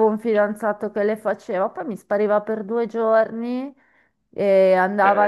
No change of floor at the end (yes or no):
yes